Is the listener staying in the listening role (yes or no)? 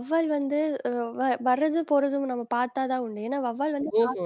yes